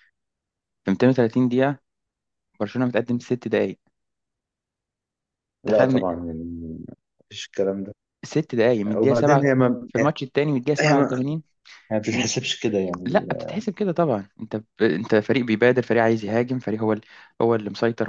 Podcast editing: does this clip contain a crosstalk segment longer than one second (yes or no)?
no